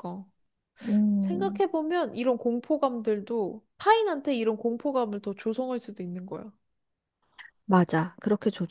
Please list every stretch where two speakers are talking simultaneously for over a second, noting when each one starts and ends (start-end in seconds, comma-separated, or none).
none